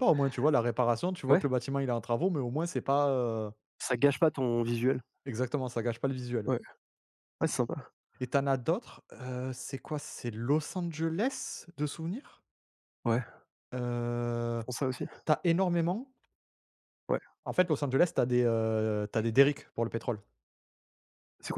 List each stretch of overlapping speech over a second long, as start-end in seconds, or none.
none